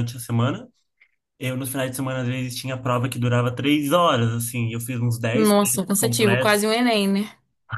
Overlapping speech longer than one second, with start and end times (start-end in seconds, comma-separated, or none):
5.3-6.6